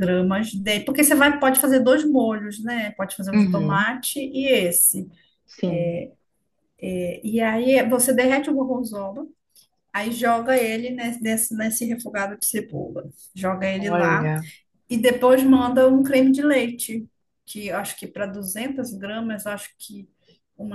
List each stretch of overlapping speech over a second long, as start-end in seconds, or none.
none